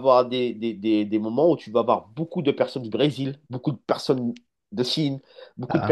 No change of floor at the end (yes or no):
yes